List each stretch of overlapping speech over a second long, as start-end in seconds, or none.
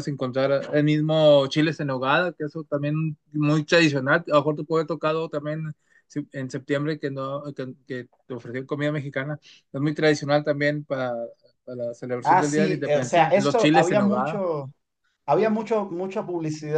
12.3-14.4